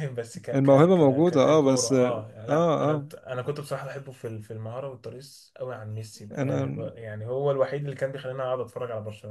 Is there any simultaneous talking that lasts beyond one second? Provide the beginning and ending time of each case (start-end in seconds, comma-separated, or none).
0.5-3.1